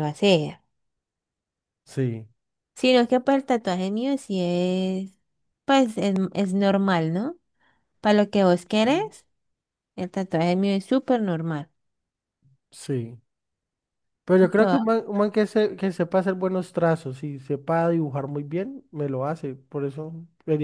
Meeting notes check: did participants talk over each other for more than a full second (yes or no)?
no